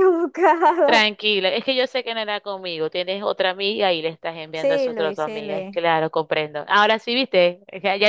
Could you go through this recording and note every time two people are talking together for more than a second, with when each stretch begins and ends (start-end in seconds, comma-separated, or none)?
4.5-5.8